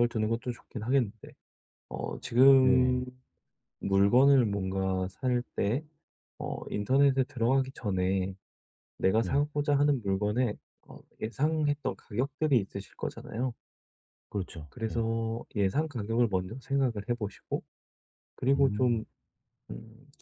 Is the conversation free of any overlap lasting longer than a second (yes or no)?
yes